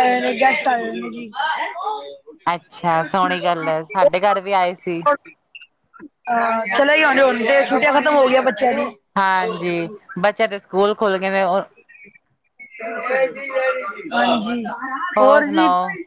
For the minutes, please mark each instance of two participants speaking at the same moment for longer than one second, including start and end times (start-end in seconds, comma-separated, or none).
none